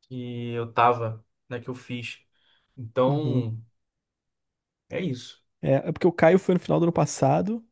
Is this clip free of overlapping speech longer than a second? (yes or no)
yes